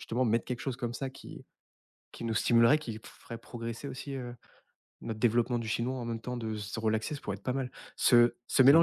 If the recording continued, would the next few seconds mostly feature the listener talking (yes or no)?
no